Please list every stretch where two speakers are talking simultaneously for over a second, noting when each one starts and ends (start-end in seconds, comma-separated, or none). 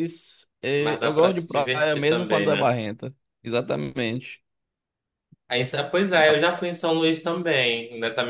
0.8-2.8